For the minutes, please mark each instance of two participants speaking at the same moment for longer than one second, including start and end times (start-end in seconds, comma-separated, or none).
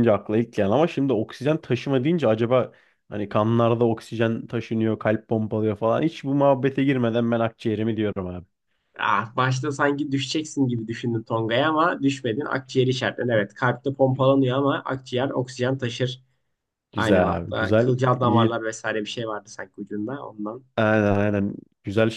17.0-18.6